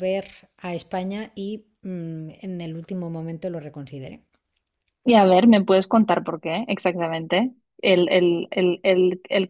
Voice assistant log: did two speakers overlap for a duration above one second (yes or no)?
no